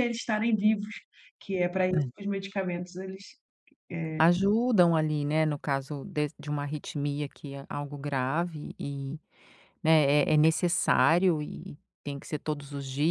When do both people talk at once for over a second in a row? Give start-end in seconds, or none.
none